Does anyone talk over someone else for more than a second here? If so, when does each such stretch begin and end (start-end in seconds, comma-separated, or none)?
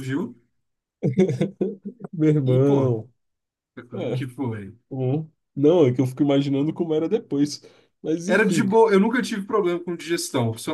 none